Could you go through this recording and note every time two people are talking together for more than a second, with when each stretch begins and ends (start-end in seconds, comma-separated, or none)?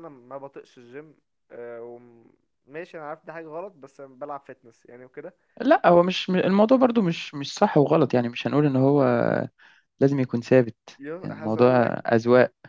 none